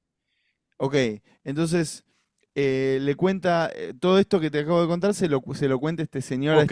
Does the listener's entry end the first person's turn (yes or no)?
yes